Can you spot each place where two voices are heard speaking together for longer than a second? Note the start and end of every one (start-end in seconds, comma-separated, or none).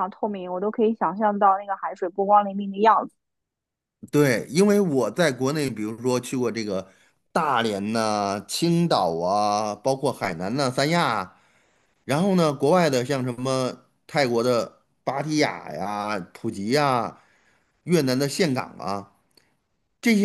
none